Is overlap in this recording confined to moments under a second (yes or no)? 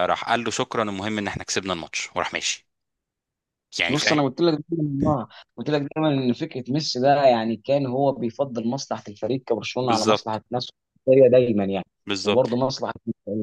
yes